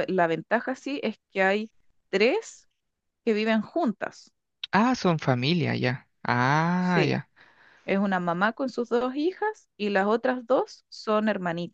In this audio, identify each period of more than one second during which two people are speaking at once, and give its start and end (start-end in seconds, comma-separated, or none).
none